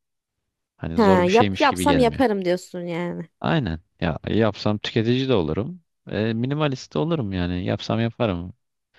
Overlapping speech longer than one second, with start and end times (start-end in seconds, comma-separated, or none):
0.9-2.2